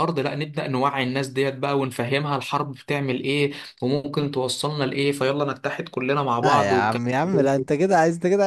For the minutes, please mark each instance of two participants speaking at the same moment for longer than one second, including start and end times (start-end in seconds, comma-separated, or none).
6.4-7.7